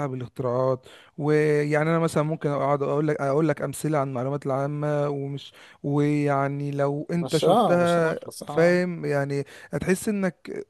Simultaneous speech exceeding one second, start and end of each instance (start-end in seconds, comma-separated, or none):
7.2-8.8